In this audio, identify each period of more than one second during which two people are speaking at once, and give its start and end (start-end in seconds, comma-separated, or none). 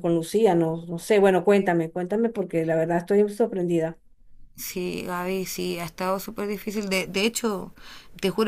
none